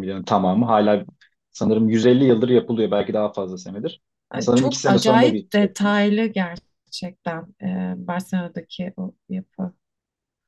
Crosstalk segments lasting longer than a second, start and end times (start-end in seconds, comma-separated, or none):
4.4-6.1